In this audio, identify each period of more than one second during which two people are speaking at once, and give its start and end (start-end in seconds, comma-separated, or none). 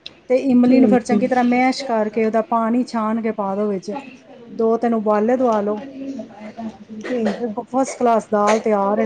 0.6-2.6